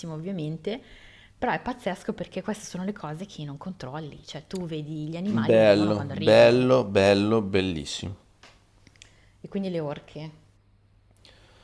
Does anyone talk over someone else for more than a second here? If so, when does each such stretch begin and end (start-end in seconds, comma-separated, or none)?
5.5-6.7